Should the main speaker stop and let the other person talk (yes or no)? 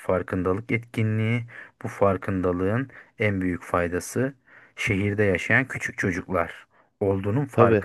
no